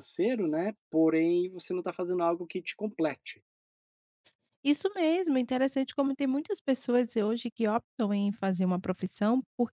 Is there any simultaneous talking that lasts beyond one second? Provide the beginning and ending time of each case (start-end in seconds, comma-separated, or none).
none